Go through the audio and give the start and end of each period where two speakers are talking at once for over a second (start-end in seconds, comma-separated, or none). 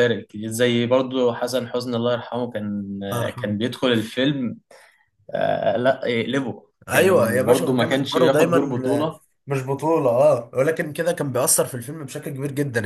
6.9-9.1